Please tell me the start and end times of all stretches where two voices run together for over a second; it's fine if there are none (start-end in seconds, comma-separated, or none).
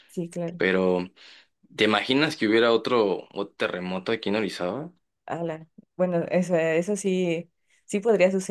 none